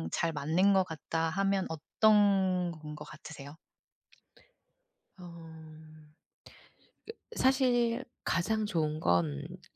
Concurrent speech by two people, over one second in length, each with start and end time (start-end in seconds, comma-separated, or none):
none